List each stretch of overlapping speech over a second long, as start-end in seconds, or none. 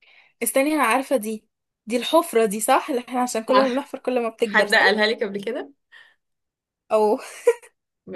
none